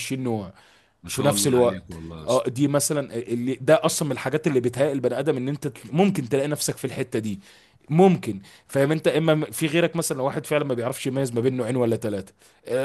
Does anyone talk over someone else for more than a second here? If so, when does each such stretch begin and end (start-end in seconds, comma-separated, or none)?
1.1-2.5